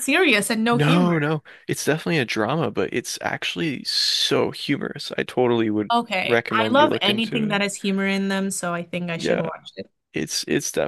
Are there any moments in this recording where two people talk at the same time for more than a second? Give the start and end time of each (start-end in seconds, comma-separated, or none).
5.9-7.6